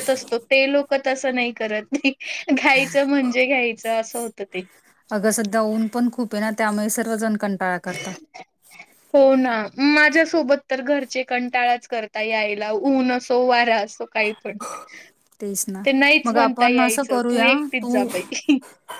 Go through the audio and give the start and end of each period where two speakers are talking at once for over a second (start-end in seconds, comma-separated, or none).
16.2-18.1